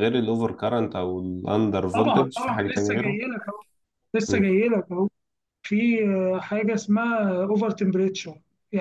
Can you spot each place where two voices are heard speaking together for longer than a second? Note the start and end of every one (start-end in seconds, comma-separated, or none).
1.9-3.2